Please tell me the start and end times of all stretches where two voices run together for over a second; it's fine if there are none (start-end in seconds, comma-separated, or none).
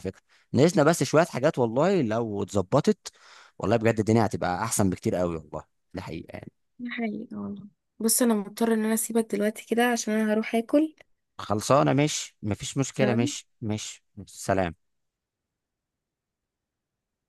none